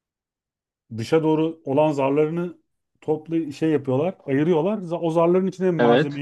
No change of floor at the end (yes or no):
yes